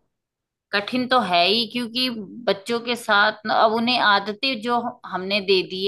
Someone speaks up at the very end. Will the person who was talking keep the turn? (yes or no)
yes